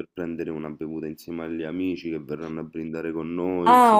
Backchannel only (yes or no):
no